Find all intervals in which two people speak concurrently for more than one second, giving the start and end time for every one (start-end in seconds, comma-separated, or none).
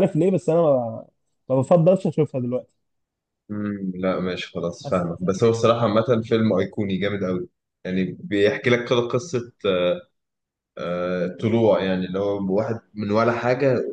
none